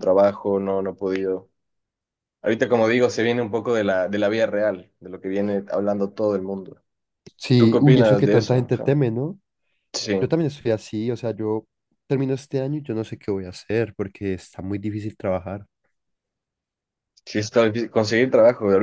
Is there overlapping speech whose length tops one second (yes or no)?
yes